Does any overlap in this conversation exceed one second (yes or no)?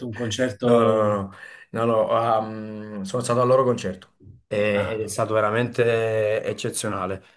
no